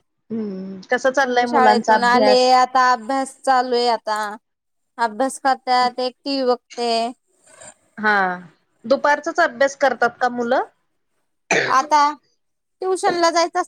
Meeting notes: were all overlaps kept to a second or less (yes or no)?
no